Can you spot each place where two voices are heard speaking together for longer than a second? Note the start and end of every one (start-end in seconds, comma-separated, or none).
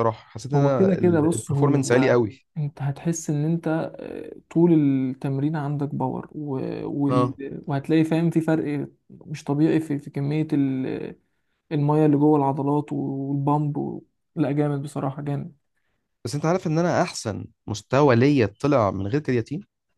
0.5-2.5